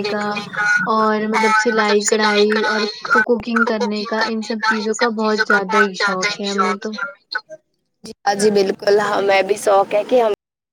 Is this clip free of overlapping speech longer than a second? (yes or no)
no